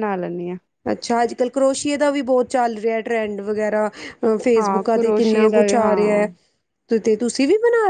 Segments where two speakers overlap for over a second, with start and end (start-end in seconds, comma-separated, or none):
4.6-6.3